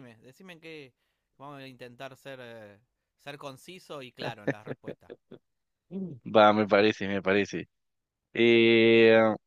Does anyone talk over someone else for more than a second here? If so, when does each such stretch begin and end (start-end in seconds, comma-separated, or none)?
none